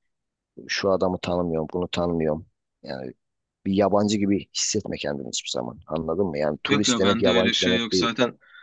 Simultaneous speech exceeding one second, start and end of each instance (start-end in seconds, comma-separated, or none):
6.7-8.1